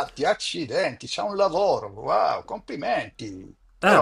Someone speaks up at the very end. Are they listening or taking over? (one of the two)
taking over